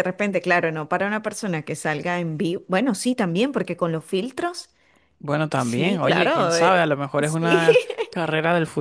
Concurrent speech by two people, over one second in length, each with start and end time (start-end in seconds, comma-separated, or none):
5.5-7.7